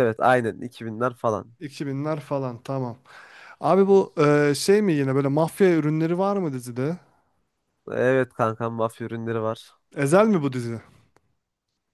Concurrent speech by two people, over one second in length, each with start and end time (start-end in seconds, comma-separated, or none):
none